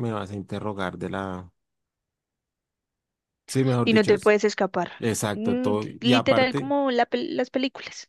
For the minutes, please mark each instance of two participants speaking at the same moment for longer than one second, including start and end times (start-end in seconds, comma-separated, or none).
5.3-6.7